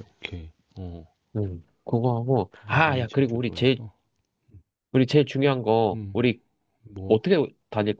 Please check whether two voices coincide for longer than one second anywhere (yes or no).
yes